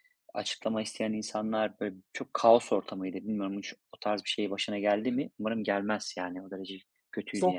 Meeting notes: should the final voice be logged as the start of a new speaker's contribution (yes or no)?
yes